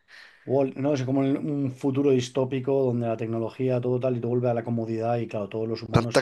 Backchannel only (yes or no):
no